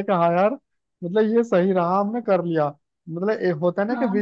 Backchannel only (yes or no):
yes